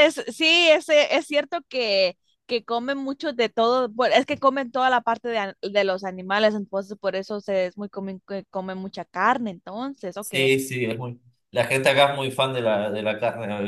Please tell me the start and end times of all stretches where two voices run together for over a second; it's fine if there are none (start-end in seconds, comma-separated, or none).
none